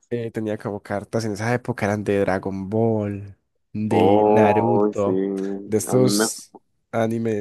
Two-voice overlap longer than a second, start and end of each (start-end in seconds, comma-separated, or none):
3.9-5.1